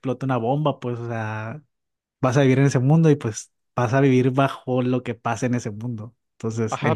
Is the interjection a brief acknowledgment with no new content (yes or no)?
no